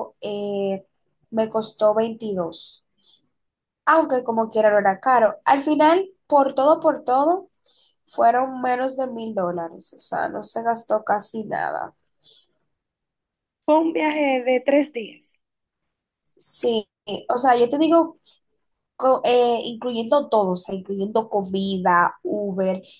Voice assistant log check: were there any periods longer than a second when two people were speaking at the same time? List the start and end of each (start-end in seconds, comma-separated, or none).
none